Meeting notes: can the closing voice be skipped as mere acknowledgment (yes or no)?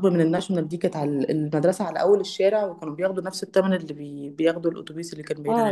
no